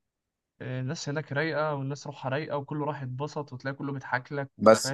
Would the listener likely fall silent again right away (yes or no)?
no